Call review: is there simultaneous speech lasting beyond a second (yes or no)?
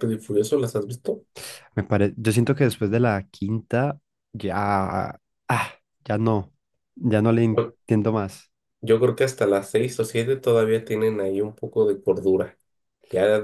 no